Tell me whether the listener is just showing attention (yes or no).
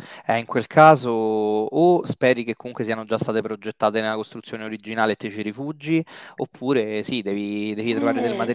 yes